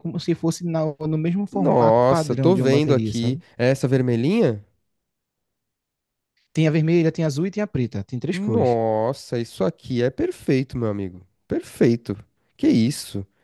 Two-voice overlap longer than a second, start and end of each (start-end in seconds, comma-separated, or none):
1.5-3.4